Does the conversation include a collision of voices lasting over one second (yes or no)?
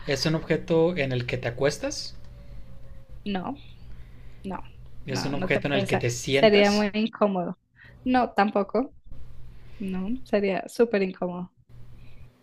yes